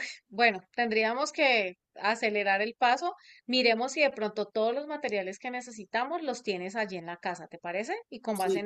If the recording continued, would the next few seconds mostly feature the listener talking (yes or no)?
yes